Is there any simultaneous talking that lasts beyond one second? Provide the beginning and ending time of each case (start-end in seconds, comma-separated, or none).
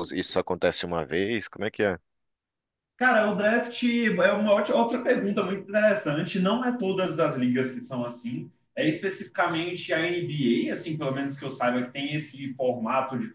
none